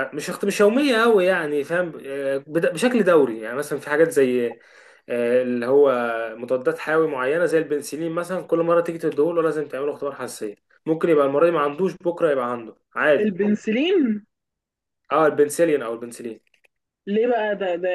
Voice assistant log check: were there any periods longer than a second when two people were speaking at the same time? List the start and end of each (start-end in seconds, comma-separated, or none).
none